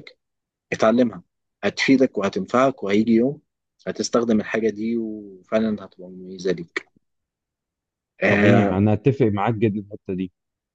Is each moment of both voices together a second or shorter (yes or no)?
yes